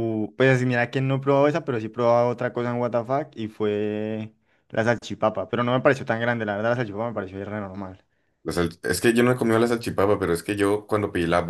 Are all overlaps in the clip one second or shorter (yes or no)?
yes